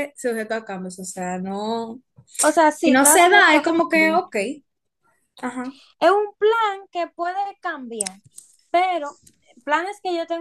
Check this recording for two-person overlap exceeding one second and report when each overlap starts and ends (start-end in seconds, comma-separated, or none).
2.8-4.2